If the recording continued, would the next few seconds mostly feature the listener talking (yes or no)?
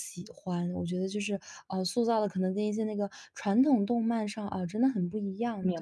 yes